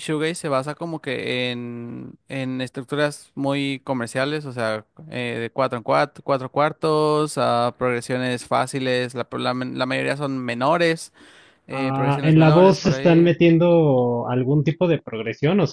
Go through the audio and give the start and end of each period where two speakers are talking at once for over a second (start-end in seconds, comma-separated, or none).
11.7-13.4